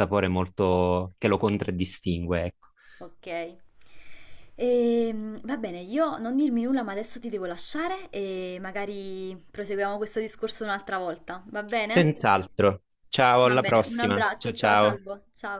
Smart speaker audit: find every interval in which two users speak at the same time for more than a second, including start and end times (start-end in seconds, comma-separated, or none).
13.4-15.0